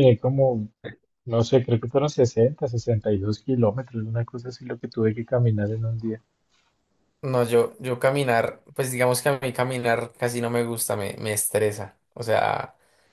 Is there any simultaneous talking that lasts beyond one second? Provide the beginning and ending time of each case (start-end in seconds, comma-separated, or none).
none